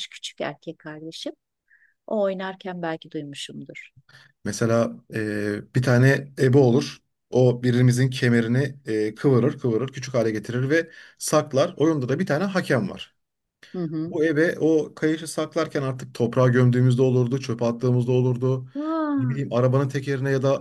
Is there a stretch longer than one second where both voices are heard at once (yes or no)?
no